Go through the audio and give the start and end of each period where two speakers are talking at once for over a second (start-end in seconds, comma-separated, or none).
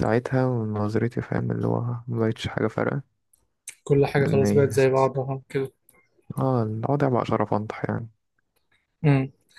none